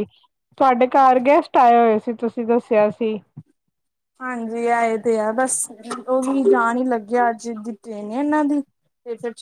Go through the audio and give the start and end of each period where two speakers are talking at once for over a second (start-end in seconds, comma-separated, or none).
none